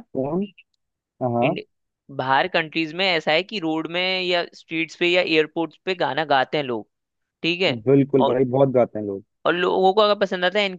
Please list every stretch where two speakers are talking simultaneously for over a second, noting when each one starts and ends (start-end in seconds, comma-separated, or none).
none